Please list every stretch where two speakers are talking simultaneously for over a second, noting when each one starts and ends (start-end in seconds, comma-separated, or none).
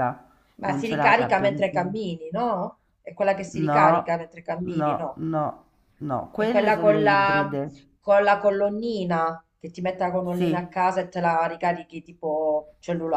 0.6-1.9, 6.3-7.6